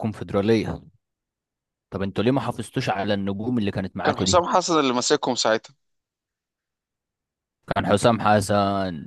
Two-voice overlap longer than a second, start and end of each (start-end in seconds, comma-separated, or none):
none